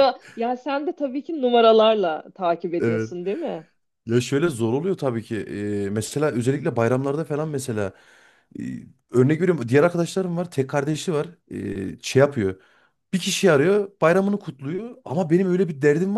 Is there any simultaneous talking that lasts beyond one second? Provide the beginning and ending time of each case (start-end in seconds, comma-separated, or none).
none